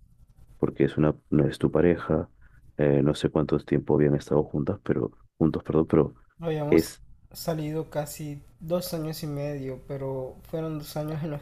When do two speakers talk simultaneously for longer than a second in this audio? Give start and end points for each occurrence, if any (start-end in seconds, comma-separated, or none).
none